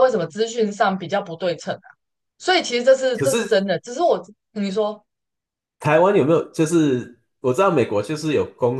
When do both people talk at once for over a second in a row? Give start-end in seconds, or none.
none